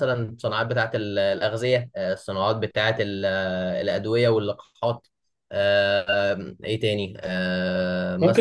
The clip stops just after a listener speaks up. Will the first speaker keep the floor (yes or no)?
no